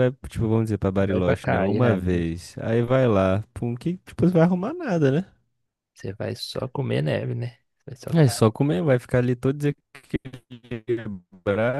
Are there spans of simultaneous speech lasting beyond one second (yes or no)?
yes